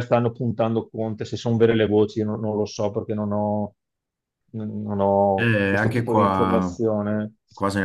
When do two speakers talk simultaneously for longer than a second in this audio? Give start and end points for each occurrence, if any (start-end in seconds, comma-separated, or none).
5.4-6.8